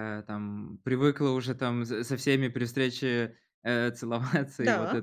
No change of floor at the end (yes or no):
yes